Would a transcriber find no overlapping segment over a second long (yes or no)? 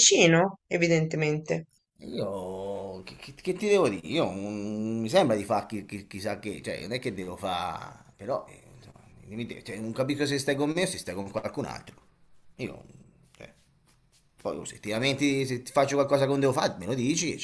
yes